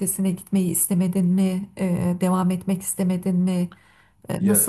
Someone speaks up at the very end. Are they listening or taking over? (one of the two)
taking over